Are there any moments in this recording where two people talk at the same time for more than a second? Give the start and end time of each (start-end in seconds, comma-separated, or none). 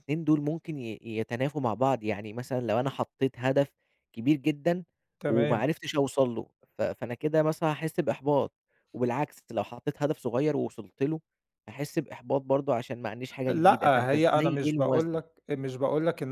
13.5-15.2